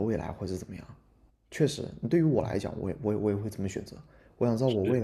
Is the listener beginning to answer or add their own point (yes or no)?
no